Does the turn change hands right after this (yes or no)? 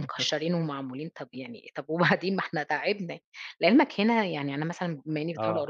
no